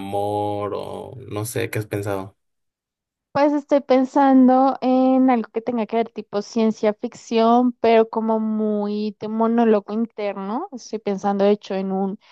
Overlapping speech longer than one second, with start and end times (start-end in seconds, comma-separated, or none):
none